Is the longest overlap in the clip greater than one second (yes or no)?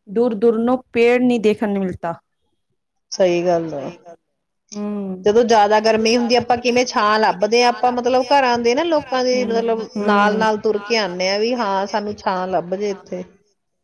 yes